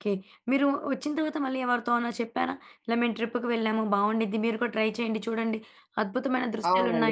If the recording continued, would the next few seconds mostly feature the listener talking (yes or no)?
yes